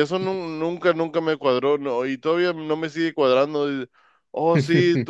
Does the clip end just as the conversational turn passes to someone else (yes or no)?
no